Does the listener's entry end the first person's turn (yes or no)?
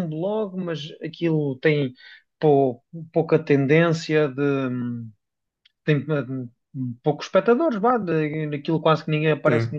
no